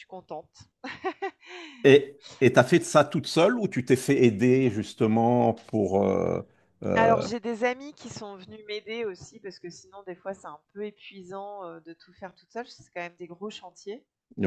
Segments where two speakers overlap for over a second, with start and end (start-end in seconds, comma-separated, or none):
none